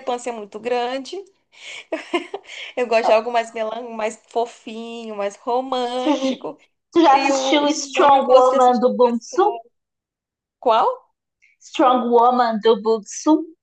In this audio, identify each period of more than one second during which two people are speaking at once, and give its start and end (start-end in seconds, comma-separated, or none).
7.1-8.8